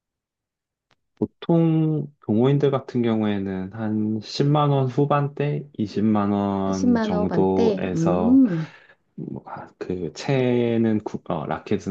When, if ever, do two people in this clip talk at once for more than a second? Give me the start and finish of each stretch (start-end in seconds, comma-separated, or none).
6.7-8.4